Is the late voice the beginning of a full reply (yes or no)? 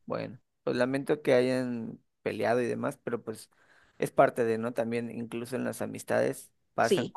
no